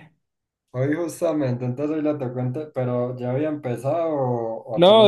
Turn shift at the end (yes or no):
yes